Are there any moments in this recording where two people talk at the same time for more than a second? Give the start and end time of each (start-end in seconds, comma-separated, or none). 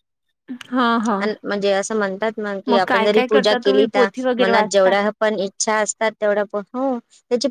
2.9-4.9